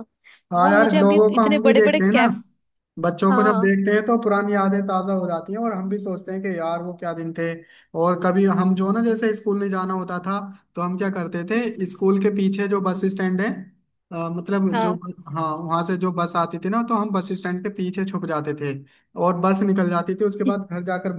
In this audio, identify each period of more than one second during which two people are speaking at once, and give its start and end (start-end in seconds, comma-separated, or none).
0.6-2.2